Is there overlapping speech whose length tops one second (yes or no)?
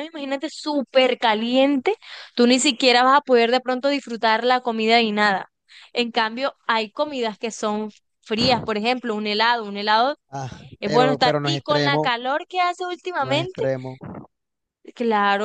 yes